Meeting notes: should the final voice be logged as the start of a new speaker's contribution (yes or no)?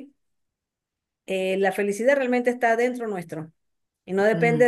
no